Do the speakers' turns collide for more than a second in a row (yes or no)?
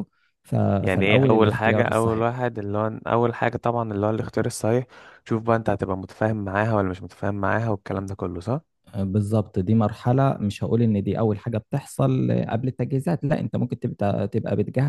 yes